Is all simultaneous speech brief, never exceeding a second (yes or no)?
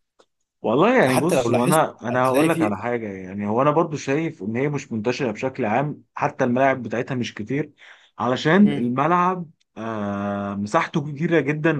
no